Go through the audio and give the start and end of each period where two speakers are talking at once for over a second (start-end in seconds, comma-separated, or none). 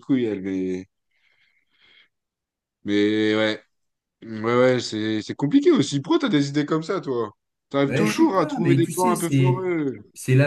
7.9-9.7